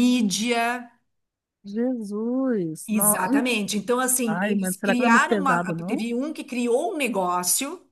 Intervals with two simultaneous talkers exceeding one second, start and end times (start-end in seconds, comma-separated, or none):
4.3-6.1